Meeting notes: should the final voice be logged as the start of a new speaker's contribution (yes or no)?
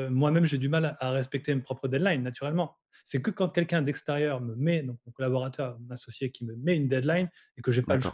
no